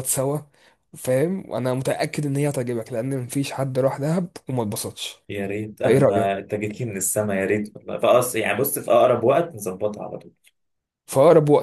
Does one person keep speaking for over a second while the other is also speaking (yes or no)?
no